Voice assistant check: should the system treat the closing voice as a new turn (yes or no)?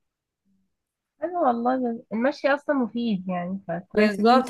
yes